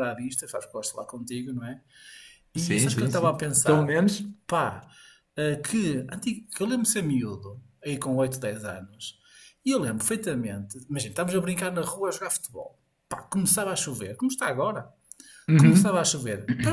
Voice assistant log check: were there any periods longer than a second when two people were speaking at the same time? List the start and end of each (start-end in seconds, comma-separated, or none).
2.6-4.0